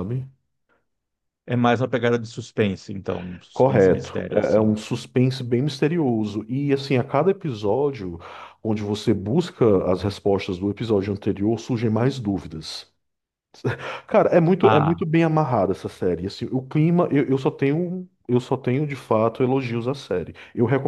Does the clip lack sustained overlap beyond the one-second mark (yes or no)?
no